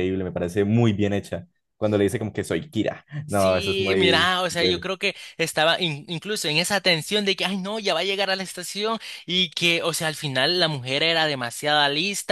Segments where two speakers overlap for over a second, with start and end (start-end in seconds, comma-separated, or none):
3.3-4.9